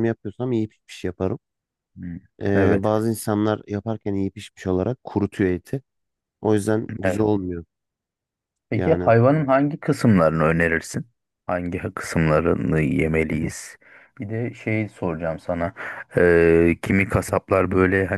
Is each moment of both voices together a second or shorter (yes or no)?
yes